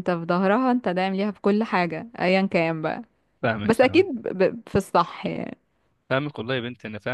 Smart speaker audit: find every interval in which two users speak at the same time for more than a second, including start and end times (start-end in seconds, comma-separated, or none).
none